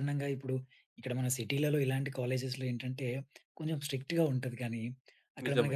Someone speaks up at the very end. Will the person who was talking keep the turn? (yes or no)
yes